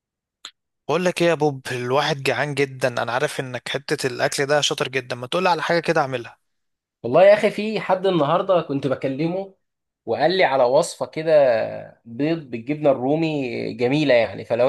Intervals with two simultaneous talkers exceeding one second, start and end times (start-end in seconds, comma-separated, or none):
none